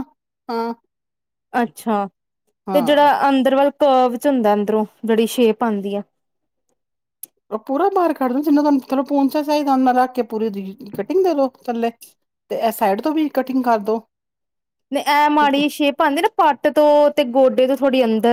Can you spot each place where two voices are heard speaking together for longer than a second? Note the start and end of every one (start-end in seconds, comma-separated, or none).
none